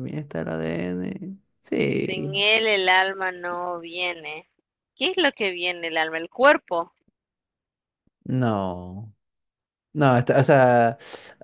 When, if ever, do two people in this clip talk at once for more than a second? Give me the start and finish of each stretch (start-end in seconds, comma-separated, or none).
none